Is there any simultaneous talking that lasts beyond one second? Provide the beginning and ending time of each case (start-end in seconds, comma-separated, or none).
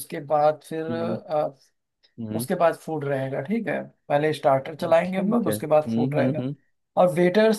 5.0-6.5